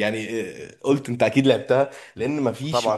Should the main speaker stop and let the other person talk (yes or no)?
no